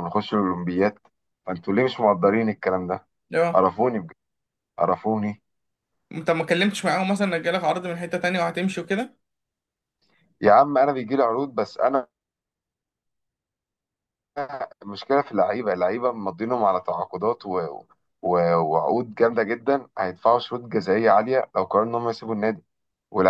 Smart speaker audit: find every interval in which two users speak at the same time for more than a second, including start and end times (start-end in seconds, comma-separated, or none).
none